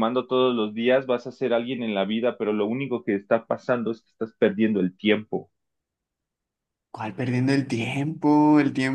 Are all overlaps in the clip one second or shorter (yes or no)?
yes